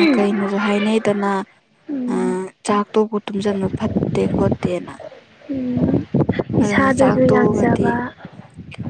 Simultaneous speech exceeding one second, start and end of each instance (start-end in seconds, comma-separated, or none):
6.6-7.9